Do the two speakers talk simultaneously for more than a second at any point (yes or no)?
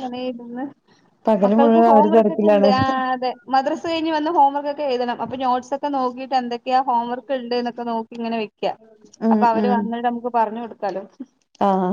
yes